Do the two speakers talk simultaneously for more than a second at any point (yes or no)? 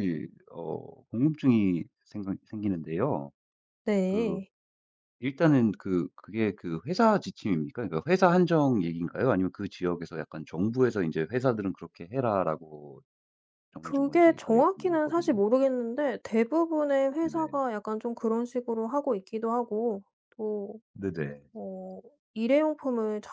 yes